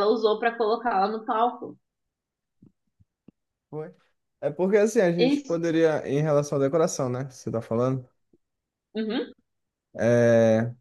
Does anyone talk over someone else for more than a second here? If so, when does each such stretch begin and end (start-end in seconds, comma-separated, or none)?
none